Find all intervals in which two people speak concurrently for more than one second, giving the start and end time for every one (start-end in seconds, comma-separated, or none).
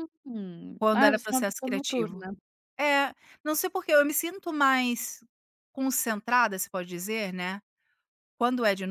0.8-2.2